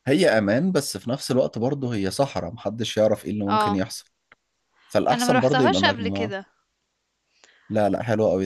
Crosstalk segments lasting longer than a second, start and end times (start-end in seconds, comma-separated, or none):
5.1-6.3